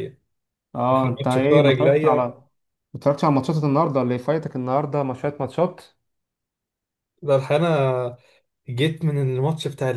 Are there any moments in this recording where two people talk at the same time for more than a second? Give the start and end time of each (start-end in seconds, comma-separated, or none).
0.9-2.3